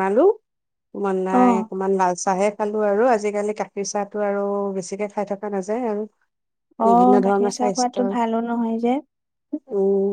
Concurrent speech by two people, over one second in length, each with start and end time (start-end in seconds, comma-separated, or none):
6.8-8.1